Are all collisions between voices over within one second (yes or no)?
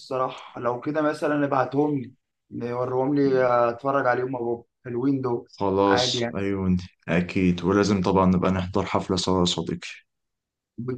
yes